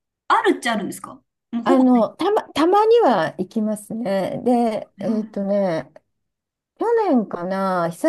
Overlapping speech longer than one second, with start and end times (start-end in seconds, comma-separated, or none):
none